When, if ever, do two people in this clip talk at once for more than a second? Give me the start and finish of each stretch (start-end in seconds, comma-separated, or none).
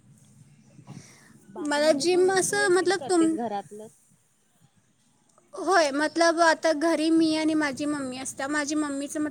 1.7-3.4